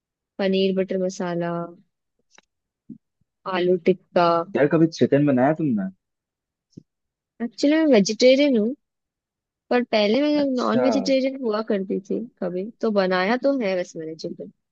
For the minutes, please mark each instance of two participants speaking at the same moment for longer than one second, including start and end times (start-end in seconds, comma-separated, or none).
none